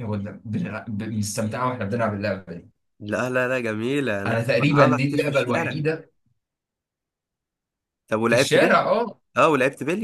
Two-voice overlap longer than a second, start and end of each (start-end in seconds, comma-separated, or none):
4.3-5.8